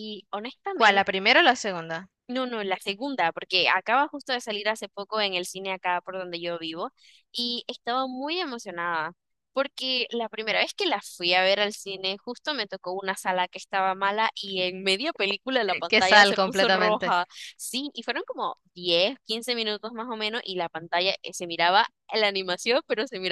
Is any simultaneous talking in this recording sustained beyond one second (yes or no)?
yes